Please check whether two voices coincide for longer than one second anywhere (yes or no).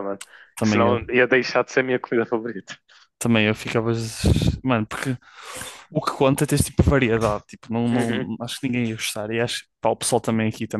no